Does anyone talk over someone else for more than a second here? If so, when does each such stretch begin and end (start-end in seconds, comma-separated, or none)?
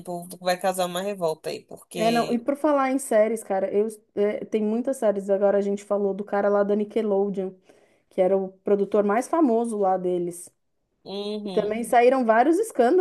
none